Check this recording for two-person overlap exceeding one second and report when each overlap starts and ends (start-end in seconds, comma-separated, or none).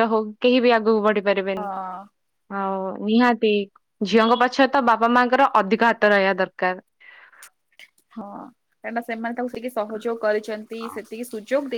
none